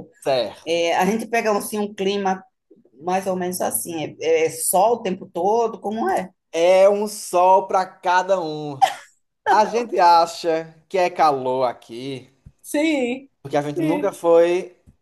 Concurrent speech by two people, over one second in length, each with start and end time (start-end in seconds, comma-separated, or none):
none